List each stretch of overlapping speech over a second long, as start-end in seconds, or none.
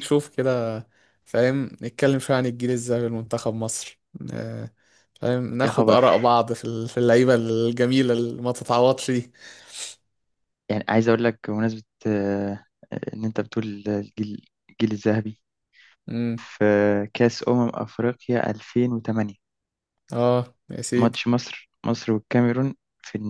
none